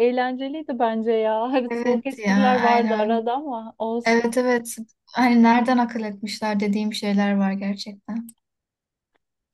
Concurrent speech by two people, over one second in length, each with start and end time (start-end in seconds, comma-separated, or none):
1.7-3.3